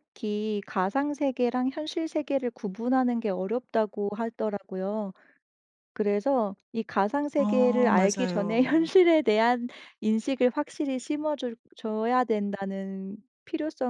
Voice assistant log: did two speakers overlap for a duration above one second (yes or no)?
yes